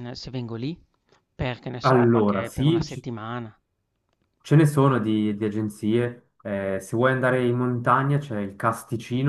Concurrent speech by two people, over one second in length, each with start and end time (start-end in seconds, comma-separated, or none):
1.8-3.1